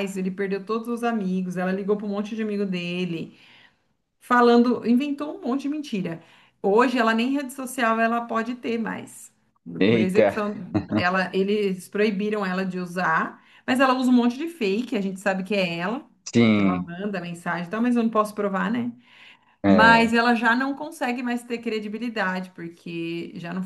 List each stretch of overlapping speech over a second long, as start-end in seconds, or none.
none